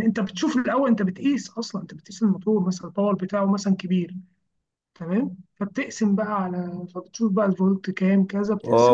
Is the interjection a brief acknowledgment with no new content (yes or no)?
no